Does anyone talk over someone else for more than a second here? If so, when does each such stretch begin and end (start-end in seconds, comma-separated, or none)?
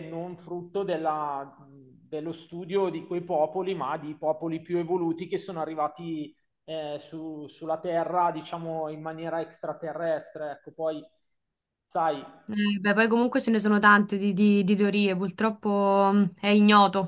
none